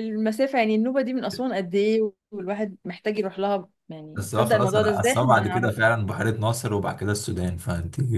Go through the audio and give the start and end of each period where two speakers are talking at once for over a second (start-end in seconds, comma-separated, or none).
4.2-6.0